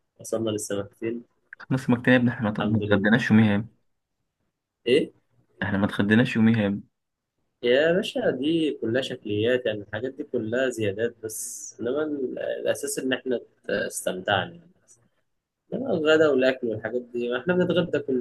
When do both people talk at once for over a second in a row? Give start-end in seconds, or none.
none